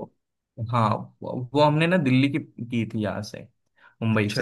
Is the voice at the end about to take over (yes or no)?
no